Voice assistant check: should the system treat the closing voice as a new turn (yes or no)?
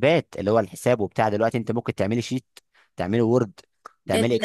yes